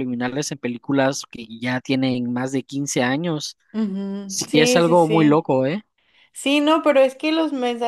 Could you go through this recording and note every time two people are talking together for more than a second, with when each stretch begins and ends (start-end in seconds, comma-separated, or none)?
4.3-5.5